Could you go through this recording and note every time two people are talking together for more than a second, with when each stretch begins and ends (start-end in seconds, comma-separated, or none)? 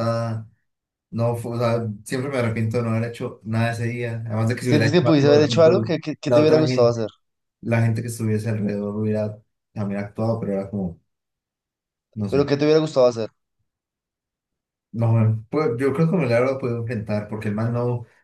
4.6-7.0